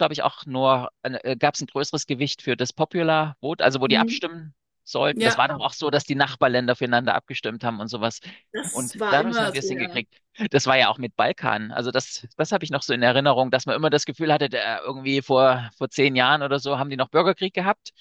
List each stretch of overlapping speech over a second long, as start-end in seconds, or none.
8.7-10.0